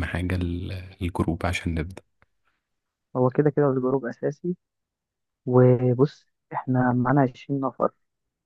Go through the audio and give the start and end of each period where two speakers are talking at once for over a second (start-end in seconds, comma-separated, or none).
none